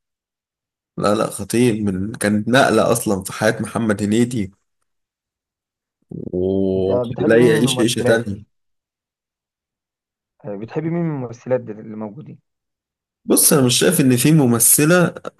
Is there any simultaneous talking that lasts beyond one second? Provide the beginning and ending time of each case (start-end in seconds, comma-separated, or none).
6.8-8.2